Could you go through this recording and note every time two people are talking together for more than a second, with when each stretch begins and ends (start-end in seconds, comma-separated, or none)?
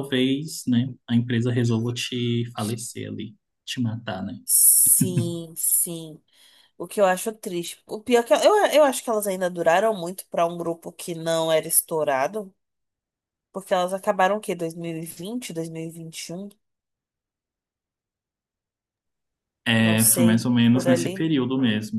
19.8-21.4